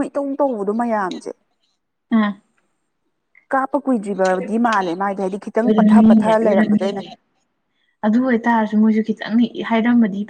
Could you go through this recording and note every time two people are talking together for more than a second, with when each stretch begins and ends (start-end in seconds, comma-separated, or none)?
5.5-7.0